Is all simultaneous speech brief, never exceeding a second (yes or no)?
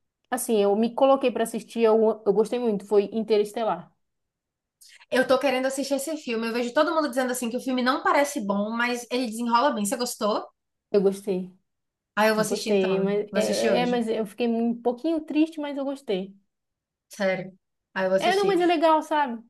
no